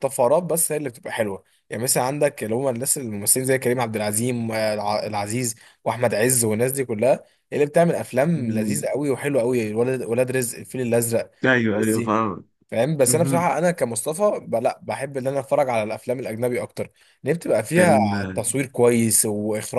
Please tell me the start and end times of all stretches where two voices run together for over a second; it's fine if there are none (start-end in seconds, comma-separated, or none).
none